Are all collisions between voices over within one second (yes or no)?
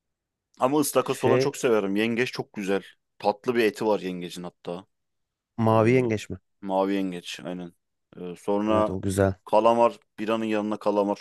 yes